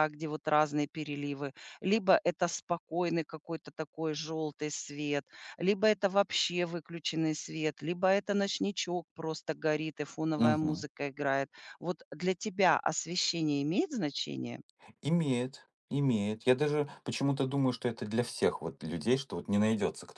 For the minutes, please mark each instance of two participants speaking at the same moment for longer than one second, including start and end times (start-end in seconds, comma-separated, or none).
none